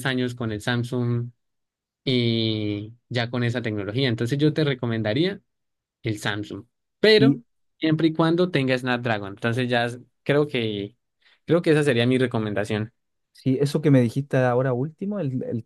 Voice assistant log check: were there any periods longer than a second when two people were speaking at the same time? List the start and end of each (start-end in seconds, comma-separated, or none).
none